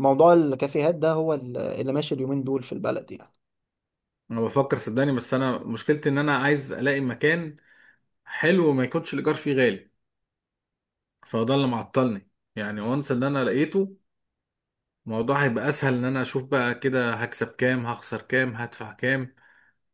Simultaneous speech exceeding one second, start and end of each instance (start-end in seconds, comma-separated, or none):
none